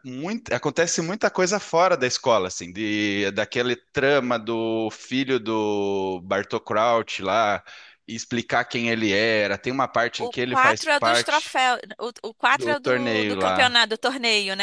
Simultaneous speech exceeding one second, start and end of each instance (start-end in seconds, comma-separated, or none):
10.2-11.6, 12.5-13.8